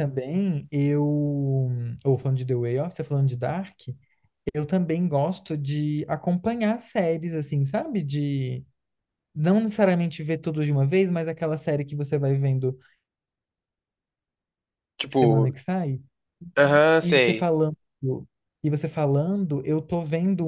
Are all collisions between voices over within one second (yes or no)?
yes